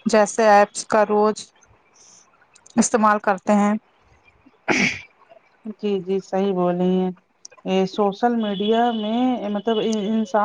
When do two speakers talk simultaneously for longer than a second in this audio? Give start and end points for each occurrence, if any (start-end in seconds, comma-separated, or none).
none